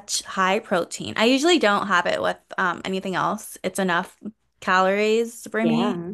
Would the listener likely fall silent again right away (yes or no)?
yes